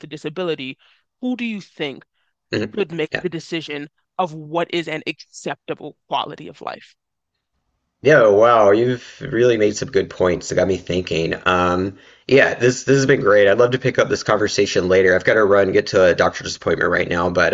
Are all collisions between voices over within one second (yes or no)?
yes